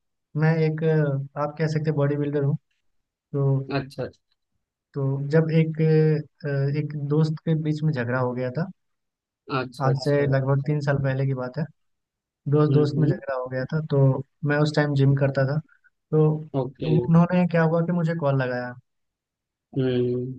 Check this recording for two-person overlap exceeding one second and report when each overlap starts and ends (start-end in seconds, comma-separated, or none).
none